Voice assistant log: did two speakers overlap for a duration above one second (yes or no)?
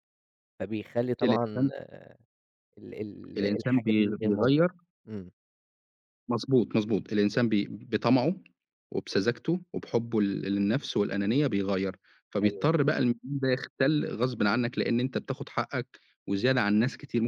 yes